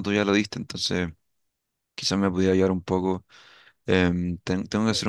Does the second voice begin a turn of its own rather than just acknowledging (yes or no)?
no